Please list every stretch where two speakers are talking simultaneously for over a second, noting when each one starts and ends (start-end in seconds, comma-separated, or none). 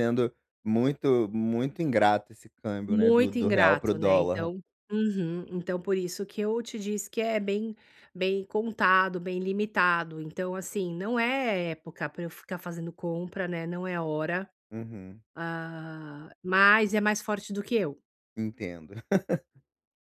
2.9-4.5